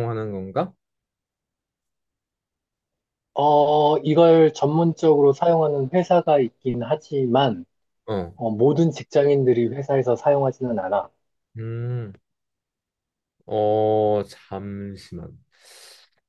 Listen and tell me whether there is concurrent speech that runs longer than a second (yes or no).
no